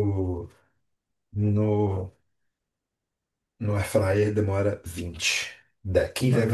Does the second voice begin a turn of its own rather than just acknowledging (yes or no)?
yes